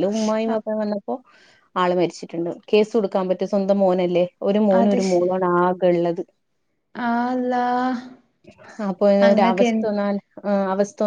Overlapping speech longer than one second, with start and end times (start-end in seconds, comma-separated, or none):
none